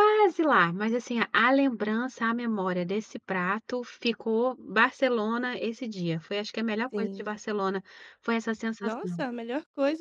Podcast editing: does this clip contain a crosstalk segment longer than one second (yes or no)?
no